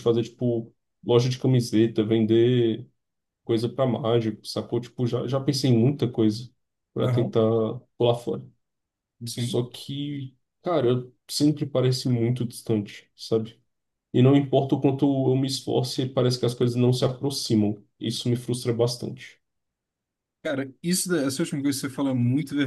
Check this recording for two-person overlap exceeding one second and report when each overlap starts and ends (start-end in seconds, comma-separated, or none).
none